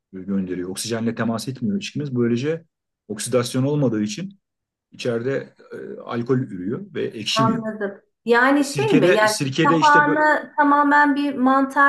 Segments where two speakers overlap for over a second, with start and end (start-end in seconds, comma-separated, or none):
8.6-10.2